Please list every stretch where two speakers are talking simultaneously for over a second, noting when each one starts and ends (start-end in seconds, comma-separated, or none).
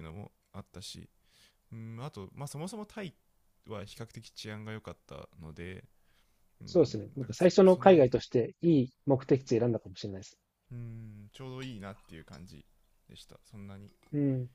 6.7-8.1